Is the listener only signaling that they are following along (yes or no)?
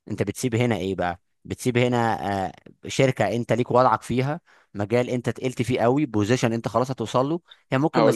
yes